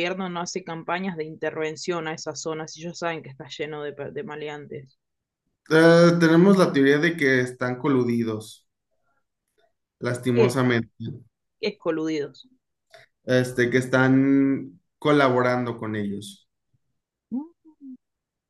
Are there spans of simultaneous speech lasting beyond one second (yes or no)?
no